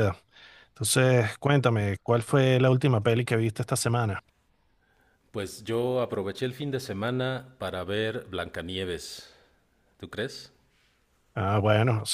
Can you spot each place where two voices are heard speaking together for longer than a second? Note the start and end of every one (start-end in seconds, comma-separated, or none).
none